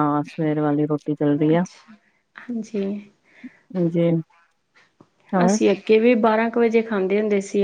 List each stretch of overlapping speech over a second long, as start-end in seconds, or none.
none